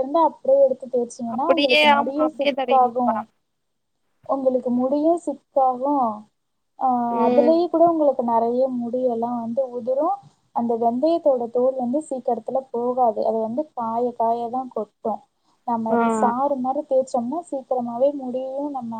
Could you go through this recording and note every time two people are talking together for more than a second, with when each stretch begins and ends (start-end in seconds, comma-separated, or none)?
1.4-3.1